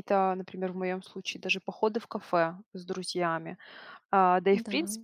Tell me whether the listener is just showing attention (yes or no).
yes